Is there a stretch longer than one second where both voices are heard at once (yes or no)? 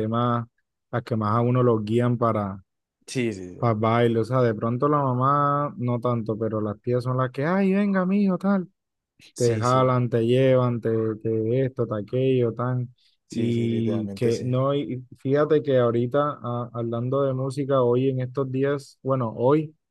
yes